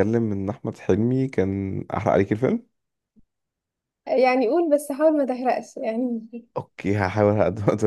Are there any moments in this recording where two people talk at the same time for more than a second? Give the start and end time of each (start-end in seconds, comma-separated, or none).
none